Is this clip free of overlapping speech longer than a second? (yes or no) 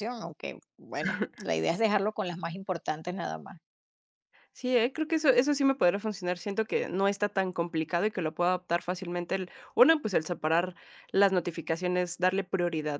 yes